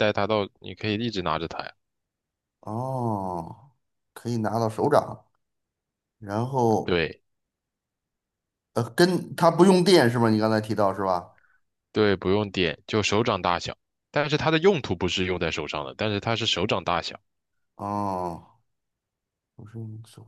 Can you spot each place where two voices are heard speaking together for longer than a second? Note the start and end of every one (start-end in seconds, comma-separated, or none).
none